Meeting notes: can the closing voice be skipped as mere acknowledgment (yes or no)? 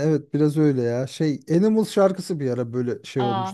no